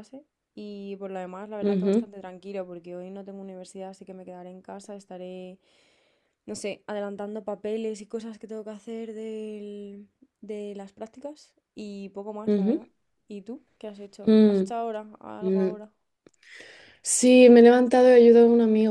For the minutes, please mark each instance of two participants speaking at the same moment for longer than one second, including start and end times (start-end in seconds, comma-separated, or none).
none